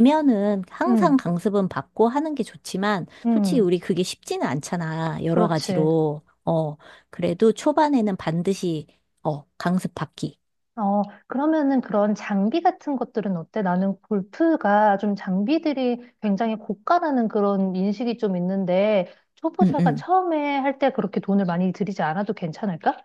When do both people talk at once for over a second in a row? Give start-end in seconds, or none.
none